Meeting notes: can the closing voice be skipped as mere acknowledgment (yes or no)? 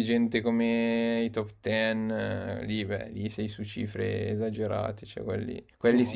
yes